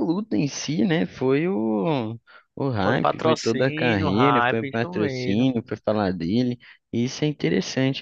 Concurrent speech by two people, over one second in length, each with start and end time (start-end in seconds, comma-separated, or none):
2.8-5.5